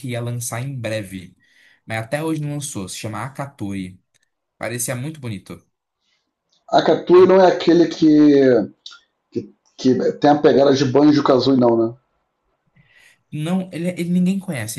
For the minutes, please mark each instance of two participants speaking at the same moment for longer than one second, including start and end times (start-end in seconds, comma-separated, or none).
none